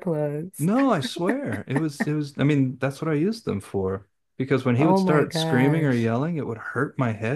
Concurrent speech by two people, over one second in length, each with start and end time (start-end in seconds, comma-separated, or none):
4.8-6.1